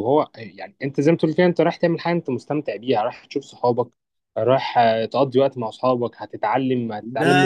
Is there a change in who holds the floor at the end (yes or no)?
yes